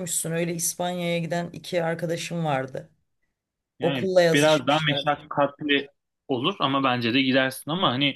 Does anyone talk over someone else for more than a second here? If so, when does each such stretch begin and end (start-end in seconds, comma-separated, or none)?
3.8-5.0